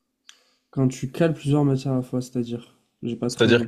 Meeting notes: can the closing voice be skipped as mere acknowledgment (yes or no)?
no